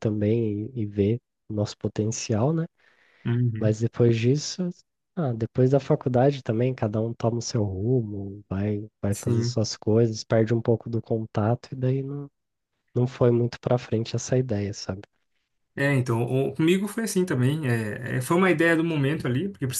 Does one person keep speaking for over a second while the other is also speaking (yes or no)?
no